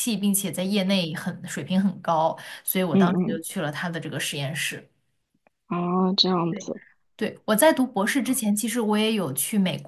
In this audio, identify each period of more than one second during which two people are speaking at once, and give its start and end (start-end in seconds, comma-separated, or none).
none